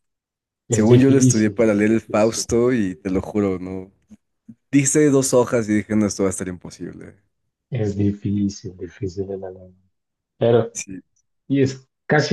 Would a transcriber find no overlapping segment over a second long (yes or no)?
no